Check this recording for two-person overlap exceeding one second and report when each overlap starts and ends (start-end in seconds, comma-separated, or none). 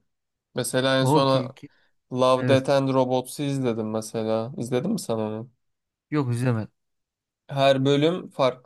none